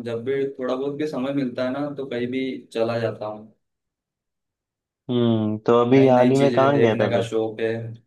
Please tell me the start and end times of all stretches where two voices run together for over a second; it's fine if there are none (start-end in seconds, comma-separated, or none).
5.9-7.3